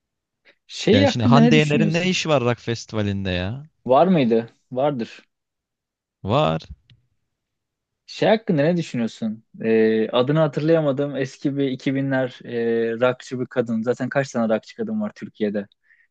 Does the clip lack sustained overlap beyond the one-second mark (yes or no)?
no